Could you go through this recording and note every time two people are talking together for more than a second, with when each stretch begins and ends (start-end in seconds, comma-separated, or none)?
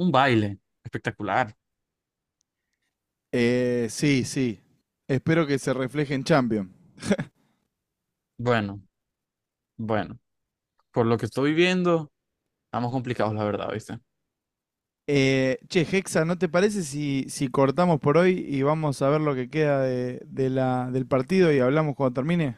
none